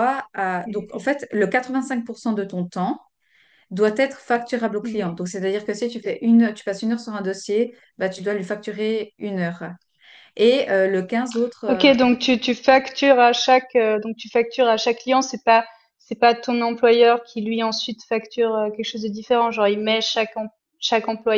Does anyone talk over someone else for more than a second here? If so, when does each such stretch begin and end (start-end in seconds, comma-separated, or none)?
none